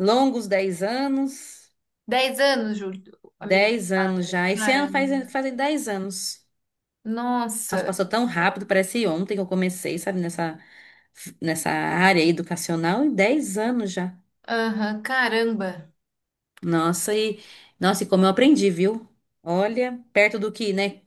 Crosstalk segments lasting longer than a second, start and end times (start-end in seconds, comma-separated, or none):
3.4-5.2